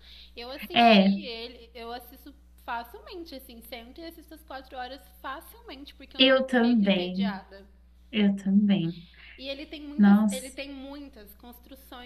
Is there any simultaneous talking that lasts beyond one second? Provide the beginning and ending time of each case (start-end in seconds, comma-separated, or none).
6.2-7.4